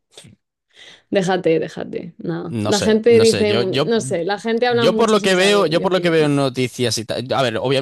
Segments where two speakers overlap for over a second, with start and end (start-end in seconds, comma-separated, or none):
2.5-3.9, 4.7-6.3